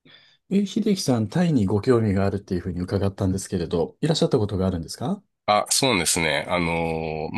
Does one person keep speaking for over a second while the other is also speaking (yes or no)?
no